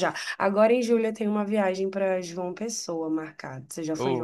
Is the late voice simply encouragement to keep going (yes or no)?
no